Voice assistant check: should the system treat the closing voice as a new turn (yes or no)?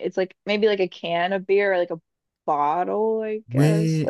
yes